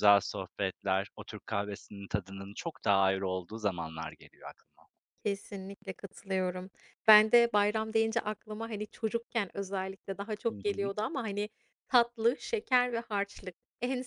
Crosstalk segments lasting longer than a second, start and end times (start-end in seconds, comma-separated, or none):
none